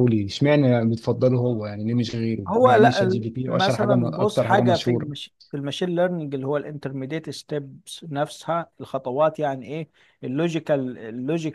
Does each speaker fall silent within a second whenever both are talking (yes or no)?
no